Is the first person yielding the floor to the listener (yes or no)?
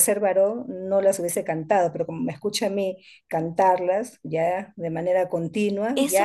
yes